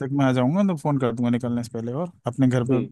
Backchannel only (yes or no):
yes